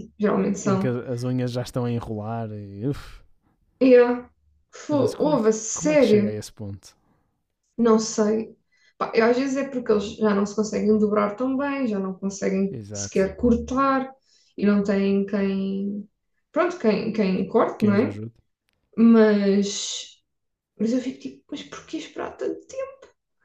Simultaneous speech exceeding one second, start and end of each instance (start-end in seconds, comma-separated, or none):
4.9-6.4